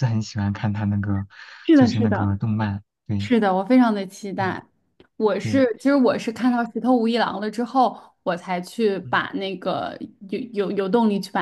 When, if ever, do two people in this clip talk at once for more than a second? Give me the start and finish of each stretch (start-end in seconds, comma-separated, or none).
none